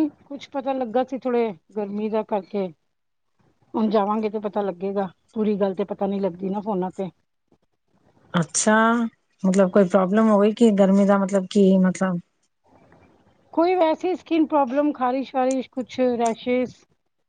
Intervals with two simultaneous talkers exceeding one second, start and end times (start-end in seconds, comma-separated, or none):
none